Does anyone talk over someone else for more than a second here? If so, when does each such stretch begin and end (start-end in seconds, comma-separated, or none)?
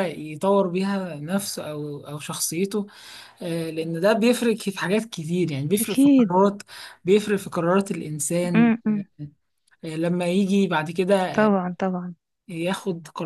none